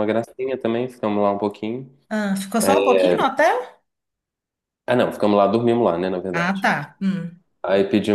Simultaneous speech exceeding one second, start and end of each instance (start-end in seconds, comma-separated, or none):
none